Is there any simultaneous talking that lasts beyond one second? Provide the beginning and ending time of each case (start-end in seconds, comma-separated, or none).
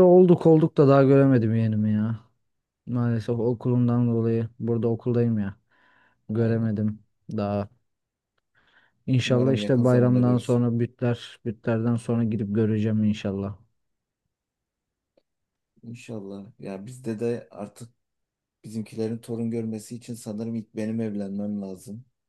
9.2-10.7